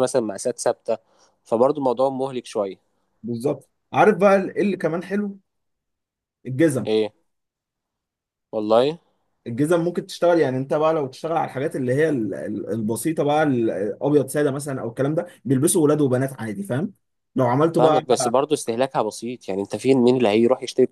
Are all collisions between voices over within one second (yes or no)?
yes